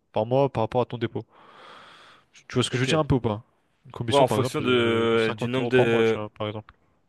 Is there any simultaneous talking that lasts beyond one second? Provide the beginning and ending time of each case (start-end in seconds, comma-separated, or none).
4.1-6.2